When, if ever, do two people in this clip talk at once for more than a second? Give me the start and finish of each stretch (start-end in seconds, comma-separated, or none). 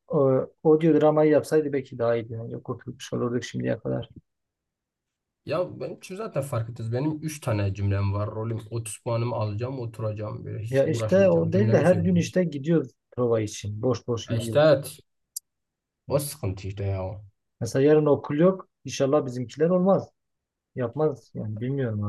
10.7-12.3